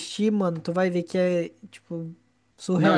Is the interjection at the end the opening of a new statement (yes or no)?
yes